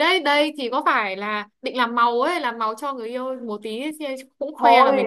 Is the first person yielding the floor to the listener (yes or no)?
yes